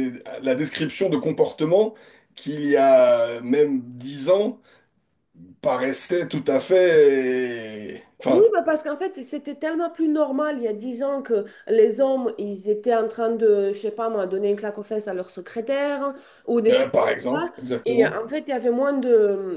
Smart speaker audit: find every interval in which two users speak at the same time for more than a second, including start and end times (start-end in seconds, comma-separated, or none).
16.7-18.2